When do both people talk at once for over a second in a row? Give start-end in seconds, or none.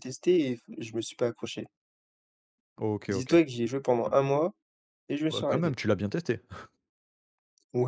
none